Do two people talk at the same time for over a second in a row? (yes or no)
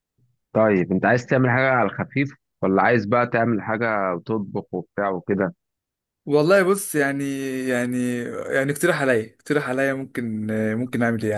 no